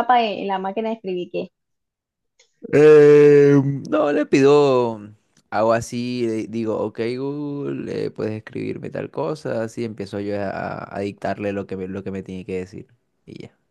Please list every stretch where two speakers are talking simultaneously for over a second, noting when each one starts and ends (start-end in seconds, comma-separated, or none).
none